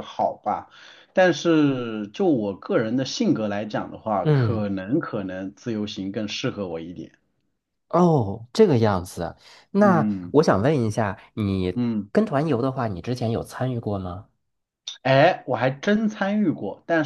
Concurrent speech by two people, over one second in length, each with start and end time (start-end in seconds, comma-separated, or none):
none